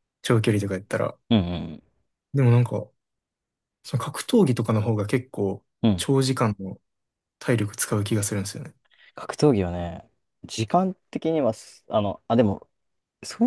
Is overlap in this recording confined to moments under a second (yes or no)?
yes